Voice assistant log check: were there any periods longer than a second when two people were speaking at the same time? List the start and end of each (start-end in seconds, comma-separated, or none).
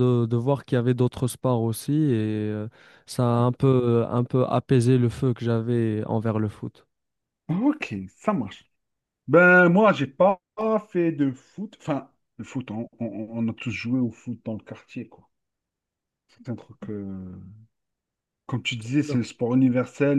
none